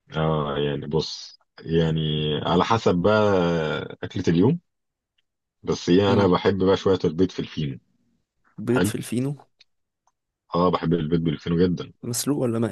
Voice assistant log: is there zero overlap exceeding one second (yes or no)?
yes